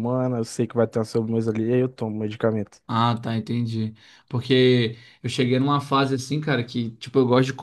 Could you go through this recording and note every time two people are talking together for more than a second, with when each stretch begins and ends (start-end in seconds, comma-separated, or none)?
none